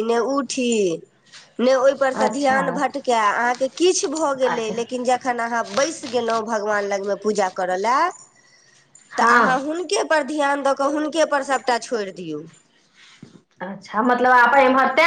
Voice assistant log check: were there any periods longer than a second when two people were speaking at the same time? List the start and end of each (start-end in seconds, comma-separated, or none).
none